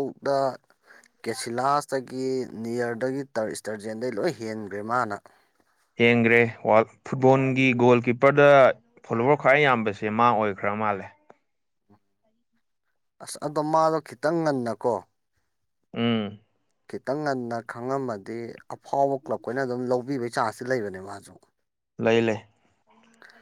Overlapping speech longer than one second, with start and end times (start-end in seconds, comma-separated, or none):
none